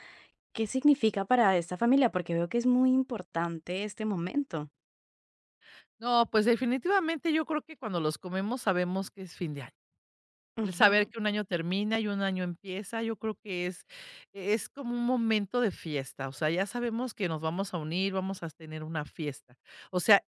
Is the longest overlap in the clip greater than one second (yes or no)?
no